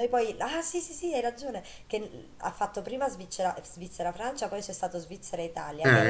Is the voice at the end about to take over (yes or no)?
no